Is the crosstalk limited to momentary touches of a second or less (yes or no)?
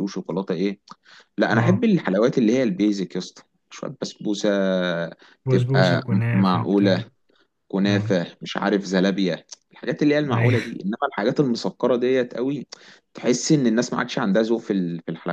no